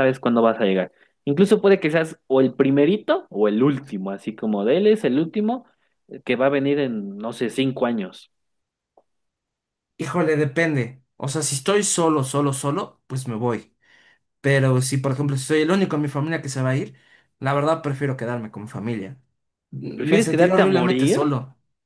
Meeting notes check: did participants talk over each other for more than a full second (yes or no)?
yes